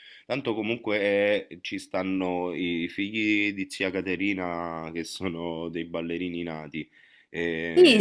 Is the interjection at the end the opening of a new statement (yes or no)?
yes